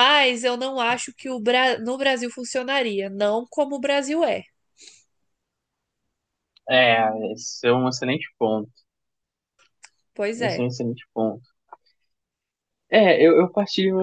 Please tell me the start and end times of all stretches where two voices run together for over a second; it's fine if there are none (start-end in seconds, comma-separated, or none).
none